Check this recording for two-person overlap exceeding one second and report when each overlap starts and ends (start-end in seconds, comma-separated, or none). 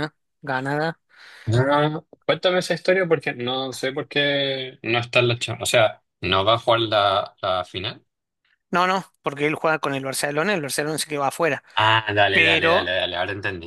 none